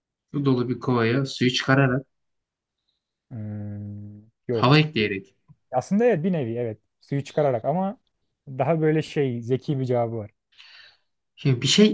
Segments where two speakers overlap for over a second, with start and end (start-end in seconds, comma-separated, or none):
none